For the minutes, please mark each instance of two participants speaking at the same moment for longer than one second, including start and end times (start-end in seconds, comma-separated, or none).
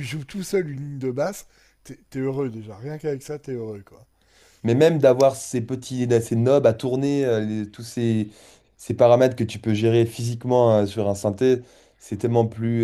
none